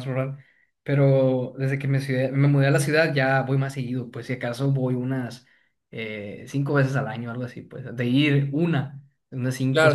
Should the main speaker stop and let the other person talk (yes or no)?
yes